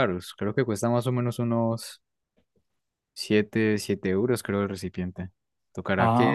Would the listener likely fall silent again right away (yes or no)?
yes